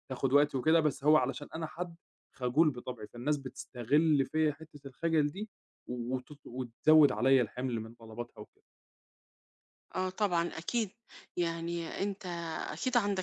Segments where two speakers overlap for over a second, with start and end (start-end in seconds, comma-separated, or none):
none